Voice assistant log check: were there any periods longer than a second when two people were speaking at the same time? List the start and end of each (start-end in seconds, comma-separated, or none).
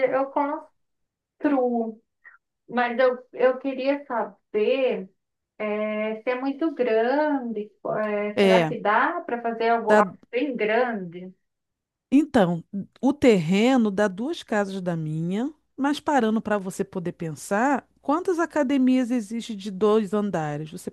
none